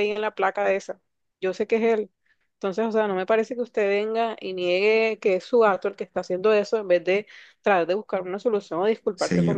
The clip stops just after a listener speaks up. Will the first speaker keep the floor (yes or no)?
no